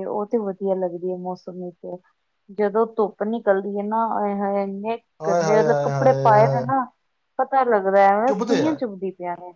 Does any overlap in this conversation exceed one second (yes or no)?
yes